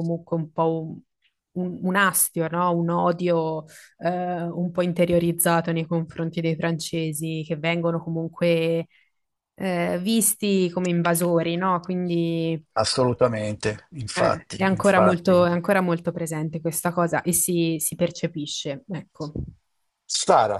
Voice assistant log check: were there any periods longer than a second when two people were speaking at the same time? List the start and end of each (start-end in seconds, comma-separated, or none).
14.1-15.4